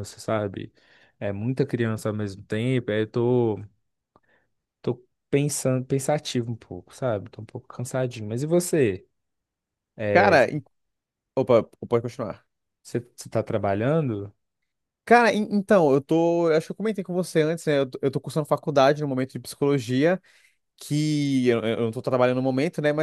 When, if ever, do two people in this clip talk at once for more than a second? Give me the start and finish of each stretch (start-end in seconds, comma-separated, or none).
none